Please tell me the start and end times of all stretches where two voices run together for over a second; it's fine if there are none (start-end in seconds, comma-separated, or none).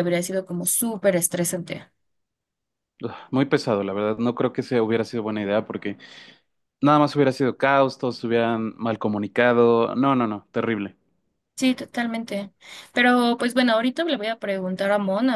none